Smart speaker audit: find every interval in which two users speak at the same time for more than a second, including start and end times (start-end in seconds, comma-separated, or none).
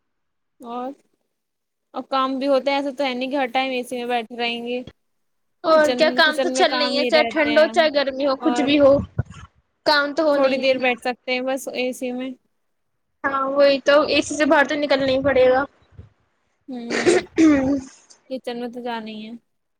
5.7-7.7